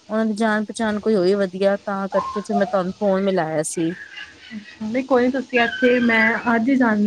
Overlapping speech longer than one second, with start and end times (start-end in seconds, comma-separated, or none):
none